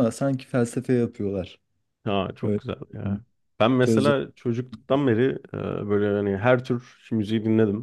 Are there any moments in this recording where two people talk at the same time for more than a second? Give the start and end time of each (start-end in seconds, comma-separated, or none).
none